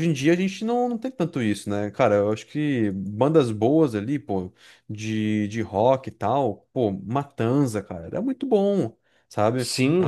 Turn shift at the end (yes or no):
no